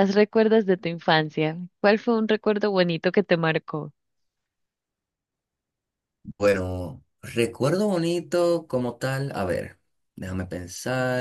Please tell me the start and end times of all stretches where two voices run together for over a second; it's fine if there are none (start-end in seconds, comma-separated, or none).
none